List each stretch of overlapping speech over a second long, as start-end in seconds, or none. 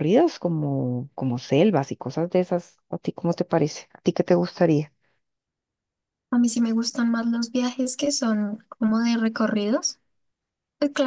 none